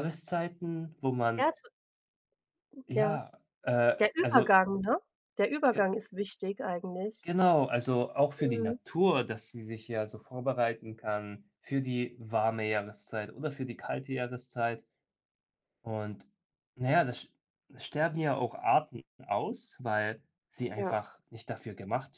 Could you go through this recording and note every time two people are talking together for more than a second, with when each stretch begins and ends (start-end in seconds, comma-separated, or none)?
none